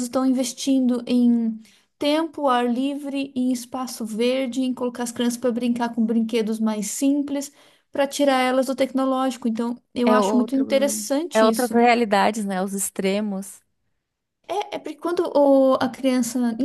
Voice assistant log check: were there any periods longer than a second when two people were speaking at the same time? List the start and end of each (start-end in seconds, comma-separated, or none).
10.0-11.8